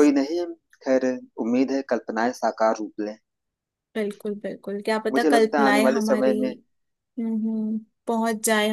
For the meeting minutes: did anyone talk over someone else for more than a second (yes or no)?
yes